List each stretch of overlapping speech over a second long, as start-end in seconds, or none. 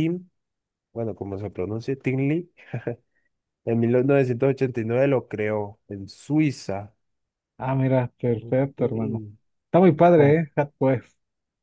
none